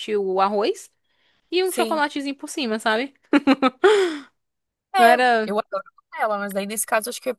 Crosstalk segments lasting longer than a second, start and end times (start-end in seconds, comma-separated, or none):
none